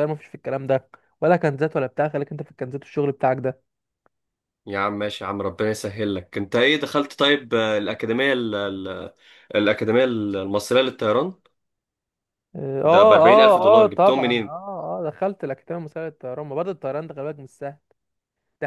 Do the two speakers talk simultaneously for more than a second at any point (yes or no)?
yes